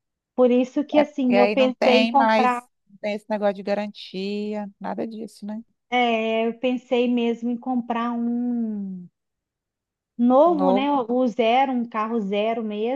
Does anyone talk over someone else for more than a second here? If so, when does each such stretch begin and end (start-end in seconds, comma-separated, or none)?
1.0-2.7